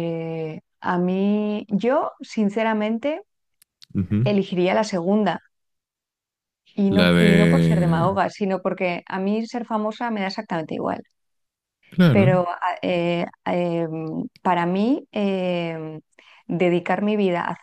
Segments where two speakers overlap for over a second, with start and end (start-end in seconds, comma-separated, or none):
6.9-8.2